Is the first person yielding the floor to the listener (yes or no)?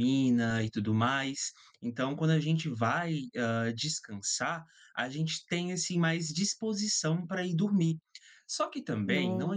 no